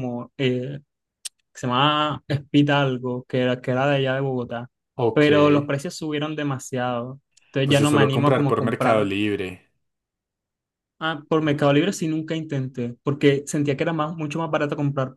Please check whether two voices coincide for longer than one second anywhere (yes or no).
yes